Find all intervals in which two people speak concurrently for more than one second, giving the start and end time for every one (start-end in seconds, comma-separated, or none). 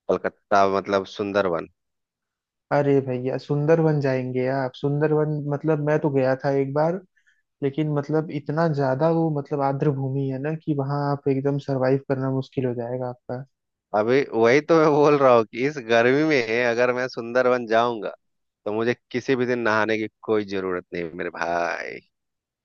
none